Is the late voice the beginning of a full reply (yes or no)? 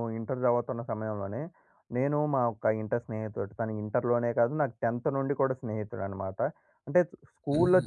no